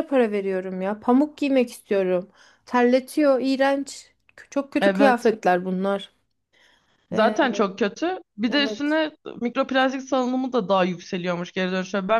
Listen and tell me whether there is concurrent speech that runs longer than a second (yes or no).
no